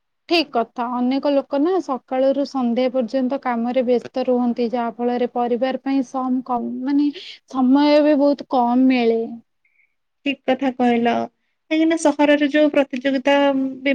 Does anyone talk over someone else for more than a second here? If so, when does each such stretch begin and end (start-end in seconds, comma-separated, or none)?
none